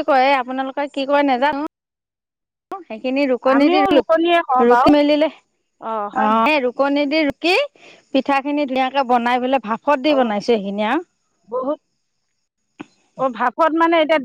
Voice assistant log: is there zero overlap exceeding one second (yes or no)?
yes